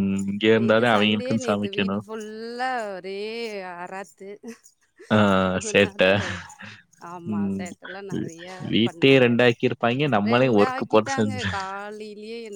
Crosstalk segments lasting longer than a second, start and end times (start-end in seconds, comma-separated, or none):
0.6-2.0